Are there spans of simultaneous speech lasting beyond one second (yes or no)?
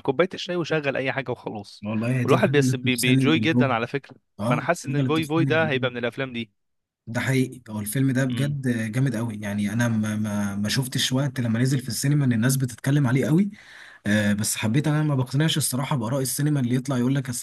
yes